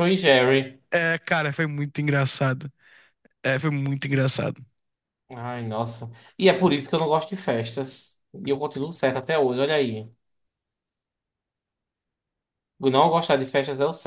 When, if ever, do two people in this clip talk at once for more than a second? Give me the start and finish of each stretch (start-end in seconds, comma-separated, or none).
none